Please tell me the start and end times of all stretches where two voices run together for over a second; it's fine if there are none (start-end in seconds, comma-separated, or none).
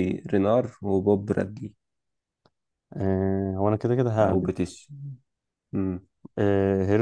none